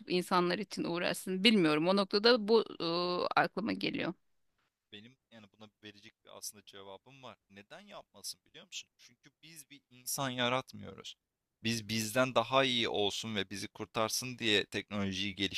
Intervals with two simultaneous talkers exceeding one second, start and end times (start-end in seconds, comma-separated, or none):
none